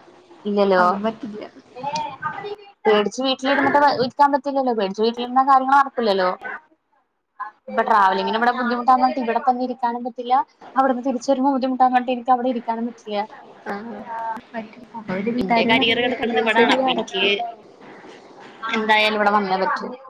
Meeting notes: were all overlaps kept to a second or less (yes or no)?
no